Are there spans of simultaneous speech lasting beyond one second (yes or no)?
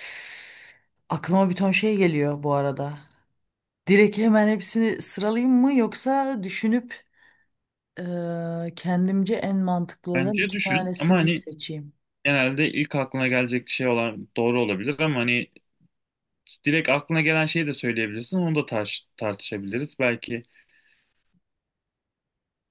yes